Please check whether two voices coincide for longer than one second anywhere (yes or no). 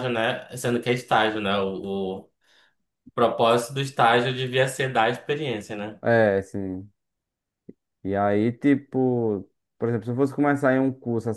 no